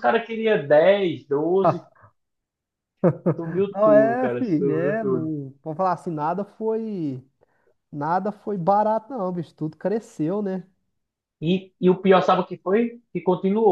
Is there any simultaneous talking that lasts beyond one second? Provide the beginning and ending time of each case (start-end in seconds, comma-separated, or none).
3.7-5.3